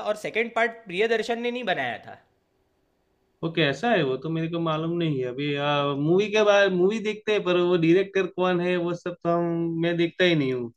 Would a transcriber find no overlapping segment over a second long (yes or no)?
yes